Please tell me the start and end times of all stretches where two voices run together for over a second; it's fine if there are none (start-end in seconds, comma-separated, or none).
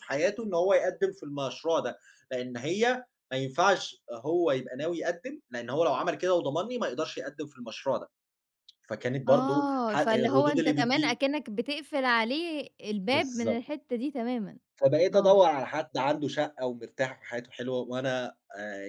9.3-11.2